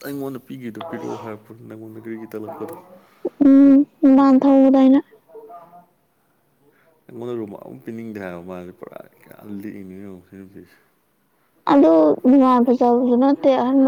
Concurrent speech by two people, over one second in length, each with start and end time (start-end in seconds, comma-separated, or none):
none